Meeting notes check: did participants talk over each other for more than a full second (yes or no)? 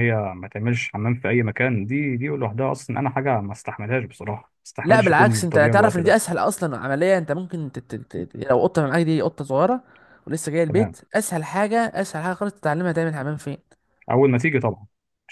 yes